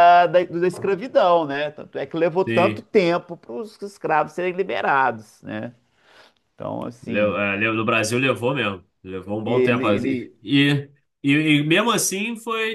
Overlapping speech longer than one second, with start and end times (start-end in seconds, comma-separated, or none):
none